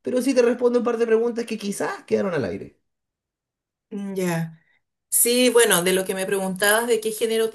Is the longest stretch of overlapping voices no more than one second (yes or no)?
yes